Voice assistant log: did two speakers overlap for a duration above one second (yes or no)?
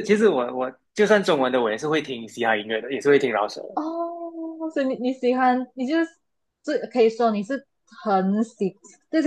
no